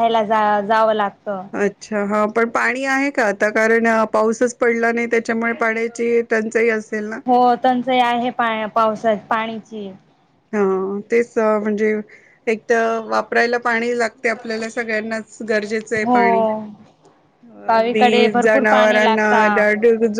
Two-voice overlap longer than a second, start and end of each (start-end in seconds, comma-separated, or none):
17.7-19.4